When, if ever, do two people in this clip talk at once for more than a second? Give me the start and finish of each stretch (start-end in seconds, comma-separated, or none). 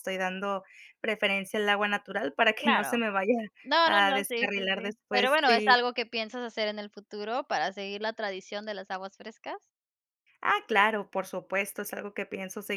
3.8-5.8